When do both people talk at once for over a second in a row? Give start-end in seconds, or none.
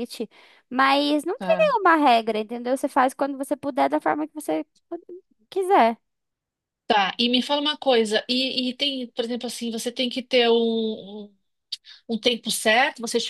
none